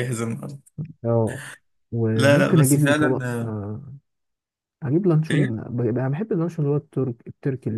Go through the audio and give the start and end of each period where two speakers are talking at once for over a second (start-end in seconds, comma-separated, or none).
2.1-3.5